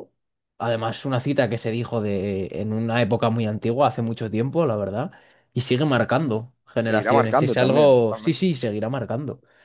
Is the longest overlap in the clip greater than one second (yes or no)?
yes